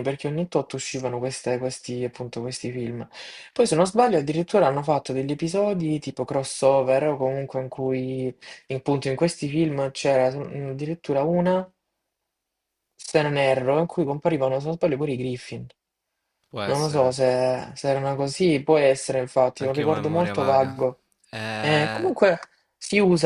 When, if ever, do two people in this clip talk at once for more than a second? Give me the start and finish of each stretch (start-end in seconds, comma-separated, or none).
19.6-20.8